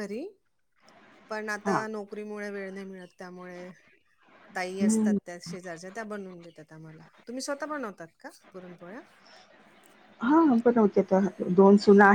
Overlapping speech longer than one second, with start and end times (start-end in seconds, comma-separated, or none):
none